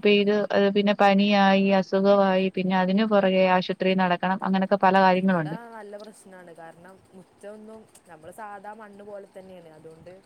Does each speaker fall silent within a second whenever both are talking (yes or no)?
yes